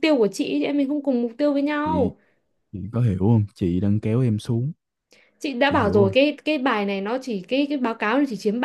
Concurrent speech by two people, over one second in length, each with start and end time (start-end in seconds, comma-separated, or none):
none